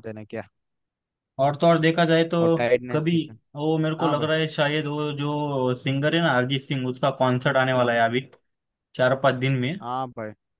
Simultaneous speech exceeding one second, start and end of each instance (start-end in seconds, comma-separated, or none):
none